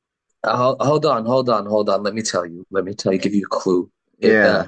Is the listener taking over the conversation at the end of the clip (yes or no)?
no